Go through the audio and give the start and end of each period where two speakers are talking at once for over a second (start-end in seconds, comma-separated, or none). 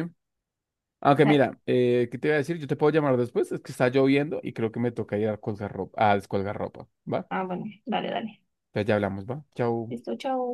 none